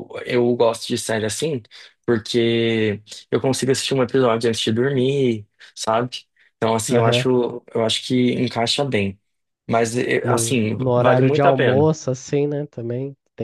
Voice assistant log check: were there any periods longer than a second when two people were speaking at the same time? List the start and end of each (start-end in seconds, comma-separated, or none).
10.2-11.9